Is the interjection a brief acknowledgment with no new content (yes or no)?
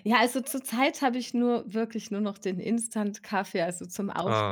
yes